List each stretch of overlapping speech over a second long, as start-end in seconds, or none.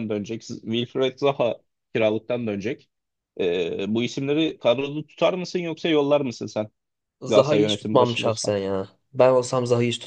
7.3-8.5